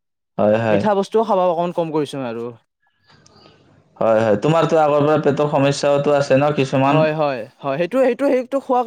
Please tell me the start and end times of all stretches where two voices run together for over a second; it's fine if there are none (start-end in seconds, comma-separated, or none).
none